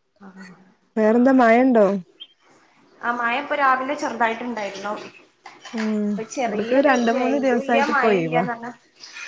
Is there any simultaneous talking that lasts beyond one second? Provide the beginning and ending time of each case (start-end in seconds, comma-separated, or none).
6.5-8.4